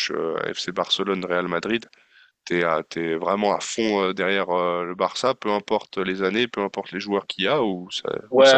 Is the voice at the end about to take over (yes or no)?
yes